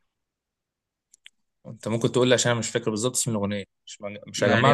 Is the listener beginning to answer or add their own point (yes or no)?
yes